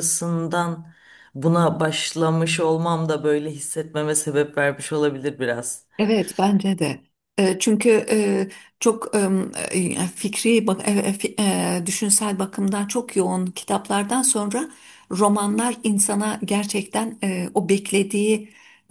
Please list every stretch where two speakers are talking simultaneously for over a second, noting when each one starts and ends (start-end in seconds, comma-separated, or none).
none